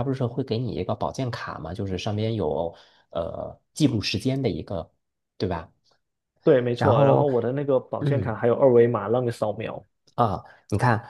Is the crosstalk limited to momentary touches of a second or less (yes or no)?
yes